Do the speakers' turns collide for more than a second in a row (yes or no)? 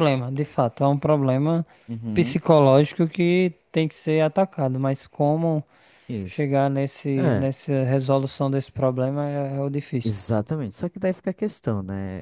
no